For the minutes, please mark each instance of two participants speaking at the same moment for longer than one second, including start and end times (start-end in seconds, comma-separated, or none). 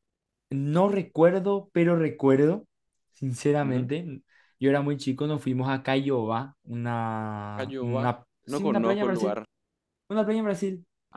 7.5-9.4